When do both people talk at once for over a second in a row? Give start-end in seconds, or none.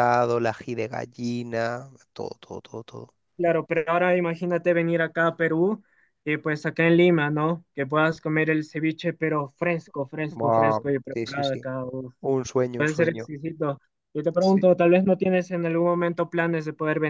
10.3-11.7